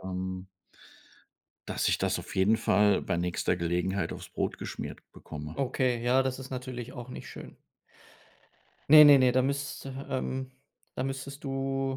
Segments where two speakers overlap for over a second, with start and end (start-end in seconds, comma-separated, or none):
none